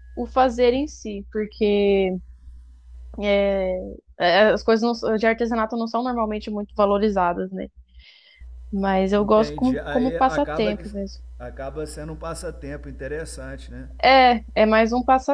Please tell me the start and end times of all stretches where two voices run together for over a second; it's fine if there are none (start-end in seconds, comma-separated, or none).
9.2-10.8